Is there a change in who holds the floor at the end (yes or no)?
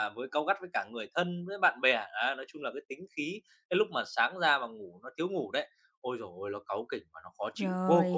yes